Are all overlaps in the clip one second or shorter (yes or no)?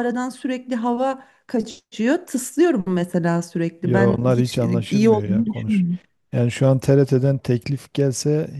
no